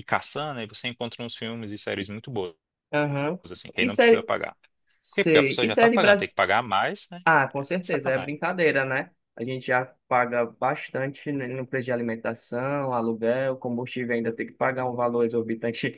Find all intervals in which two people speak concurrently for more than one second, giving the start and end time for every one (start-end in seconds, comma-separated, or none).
5.1-6.3